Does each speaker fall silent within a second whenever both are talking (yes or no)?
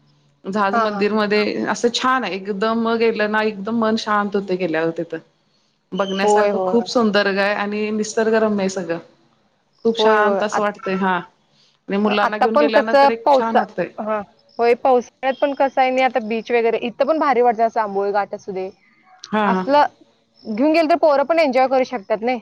no